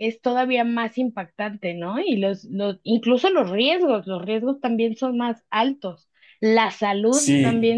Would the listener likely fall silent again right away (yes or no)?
yes